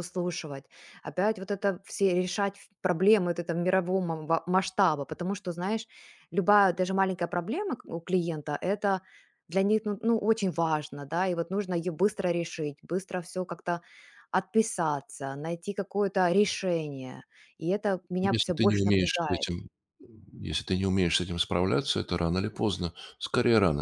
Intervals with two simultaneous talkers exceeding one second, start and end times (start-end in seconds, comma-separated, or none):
18.2-19.5